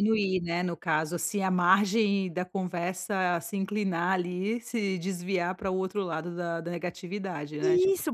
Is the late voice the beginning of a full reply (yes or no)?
yes